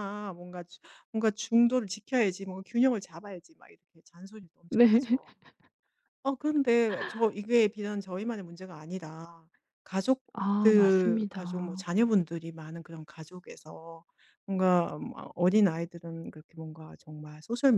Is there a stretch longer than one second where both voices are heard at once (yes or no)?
yes